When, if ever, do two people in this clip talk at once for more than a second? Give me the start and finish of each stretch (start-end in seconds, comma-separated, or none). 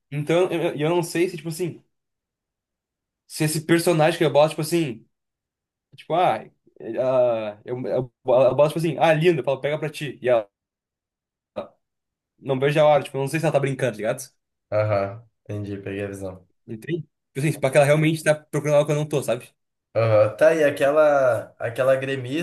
none